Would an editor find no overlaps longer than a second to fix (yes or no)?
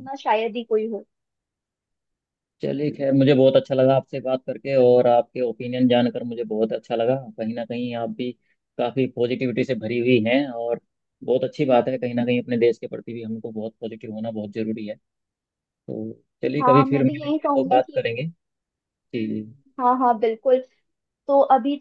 no